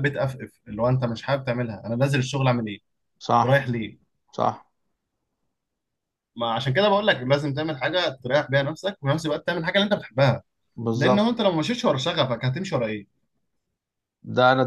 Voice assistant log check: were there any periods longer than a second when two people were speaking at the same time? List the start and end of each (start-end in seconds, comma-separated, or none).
none